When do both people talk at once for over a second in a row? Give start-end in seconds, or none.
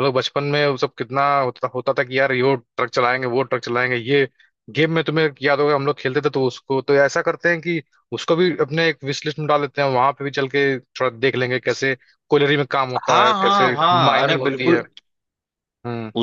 13.1-14.8